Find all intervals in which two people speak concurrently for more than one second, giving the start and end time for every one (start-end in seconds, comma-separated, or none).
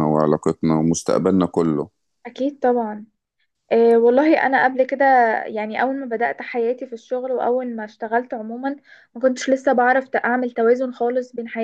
none